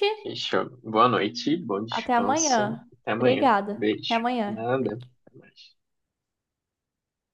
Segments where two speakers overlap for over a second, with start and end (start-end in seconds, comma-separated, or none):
1.9-4.6